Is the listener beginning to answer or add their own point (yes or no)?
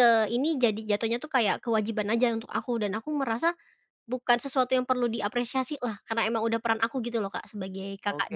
yes